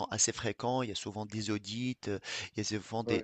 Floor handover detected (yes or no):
no